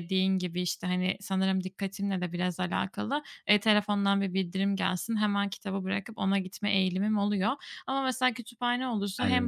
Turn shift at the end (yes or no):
no